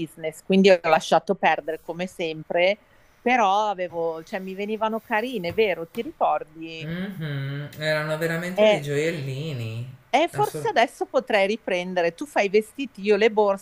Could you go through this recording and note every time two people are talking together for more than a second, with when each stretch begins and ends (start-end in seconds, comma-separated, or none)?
none